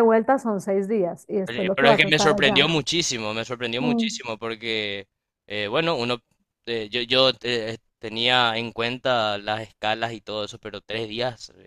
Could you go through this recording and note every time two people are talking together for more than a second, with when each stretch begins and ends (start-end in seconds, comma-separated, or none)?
1.4-2.7